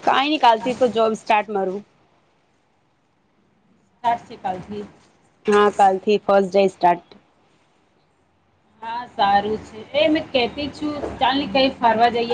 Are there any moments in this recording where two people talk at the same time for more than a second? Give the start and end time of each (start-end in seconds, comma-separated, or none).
none